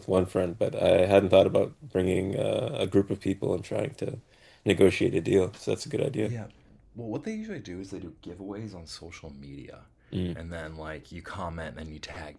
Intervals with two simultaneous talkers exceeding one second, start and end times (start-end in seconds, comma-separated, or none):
none